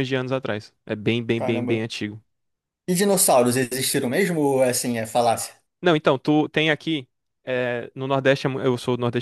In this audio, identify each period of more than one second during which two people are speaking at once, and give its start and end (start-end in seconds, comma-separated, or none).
none